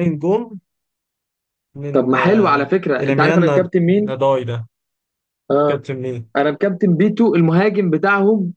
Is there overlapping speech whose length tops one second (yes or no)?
yes